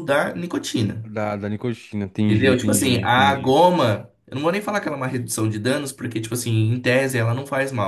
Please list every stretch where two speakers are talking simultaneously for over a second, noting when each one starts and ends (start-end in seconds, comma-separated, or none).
2.3-3.5